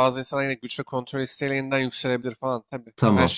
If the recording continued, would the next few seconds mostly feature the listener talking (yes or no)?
yes